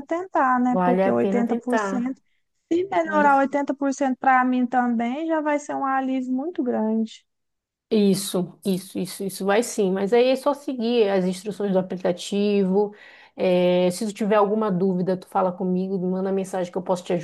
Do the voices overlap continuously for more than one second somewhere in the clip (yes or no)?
yes